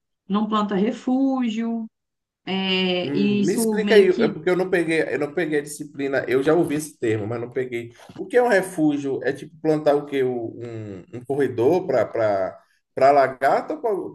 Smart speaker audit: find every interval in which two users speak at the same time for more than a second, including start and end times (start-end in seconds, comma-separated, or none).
3.0-4.3